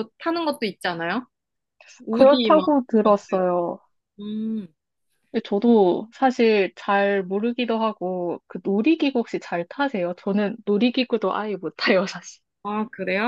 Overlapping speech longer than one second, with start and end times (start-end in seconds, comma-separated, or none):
2.1-3.4